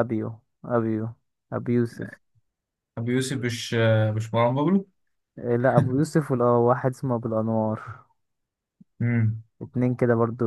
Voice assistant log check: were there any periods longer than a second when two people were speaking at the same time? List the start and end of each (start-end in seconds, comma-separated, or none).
none